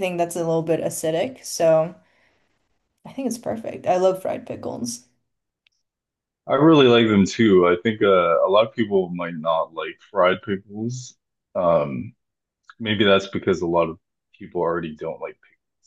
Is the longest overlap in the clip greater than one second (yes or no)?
no